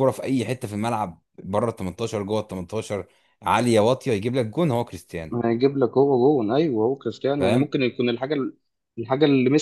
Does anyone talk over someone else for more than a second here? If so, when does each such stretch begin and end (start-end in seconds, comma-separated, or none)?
none